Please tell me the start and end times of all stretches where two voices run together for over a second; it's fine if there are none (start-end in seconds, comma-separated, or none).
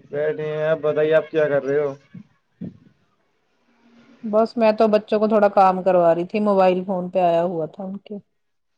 none